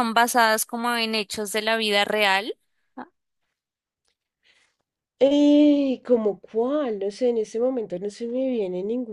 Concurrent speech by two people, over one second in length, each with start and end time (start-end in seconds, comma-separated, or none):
none